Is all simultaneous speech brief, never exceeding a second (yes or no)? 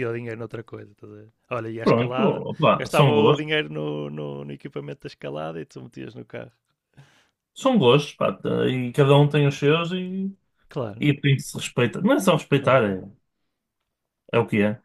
no